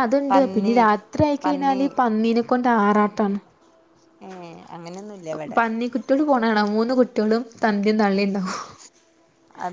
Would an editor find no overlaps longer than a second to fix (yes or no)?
yes